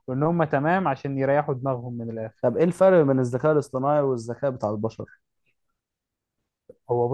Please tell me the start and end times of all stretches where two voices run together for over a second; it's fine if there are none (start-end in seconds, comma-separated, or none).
none